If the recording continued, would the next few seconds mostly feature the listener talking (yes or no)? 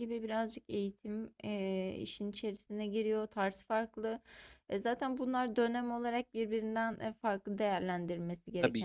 no